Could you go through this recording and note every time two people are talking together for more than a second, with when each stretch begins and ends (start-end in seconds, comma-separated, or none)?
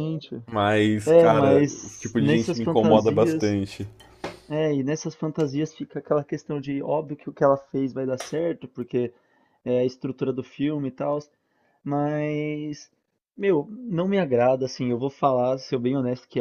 1.1-3.6